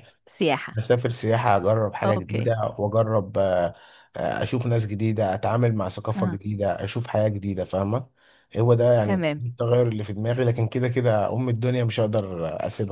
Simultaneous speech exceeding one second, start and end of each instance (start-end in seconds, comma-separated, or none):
none